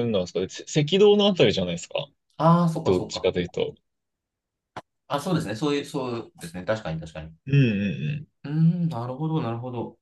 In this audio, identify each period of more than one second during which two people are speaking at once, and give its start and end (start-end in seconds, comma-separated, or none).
none